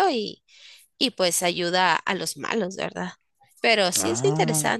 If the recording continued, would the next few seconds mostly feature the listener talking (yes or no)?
yes